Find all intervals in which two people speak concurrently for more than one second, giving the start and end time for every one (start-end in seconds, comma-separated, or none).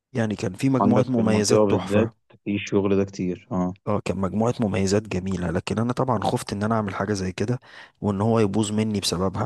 0.8-2.1